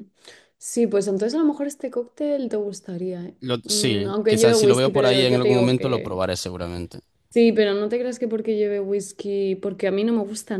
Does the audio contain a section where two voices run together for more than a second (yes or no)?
yes